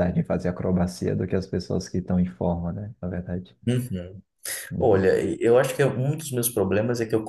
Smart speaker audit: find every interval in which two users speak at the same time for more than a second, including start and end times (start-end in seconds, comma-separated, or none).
none